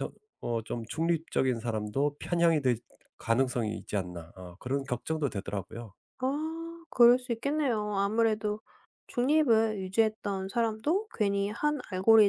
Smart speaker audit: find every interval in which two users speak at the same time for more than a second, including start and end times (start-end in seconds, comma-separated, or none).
none